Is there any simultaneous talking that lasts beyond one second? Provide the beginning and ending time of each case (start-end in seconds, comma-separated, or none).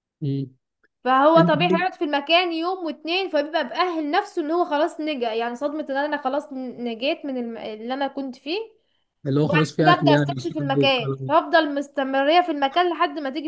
9.4-11.3